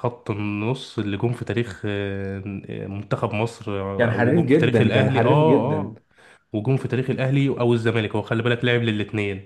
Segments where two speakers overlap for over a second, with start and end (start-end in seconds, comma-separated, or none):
4.0-5.9